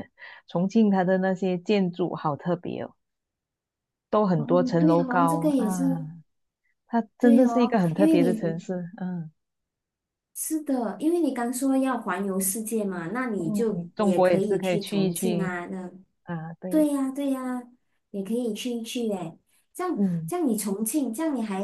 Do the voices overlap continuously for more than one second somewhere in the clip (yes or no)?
yes